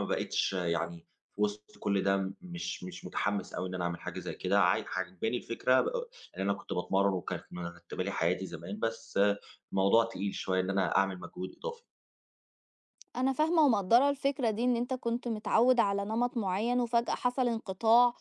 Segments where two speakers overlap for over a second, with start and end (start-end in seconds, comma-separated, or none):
none